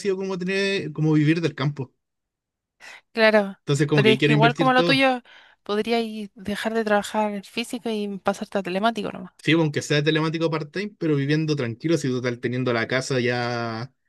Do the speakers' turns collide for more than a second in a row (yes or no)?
yes